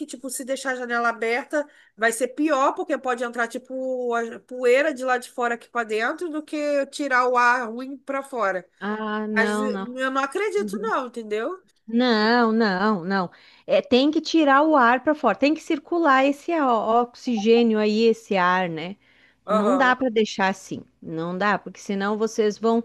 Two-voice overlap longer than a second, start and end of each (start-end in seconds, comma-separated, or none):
none